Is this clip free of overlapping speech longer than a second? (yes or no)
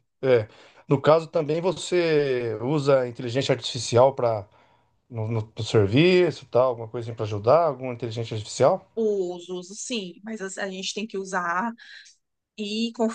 yes